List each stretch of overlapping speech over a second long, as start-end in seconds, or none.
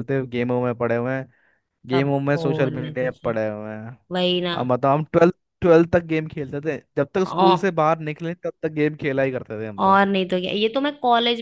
1.9-3.4